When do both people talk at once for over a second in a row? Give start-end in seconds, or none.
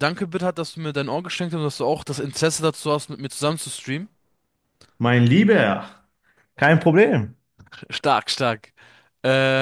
none